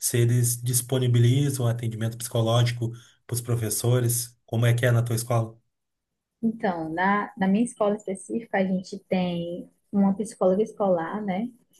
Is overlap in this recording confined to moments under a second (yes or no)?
yes